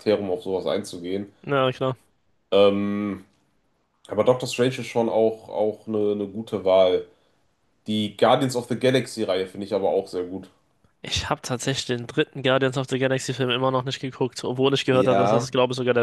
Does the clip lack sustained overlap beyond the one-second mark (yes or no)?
yes